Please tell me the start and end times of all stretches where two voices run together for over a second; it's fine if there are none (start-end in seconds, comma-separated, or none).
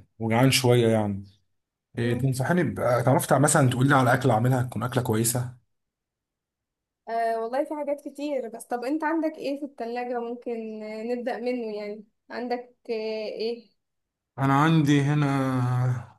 none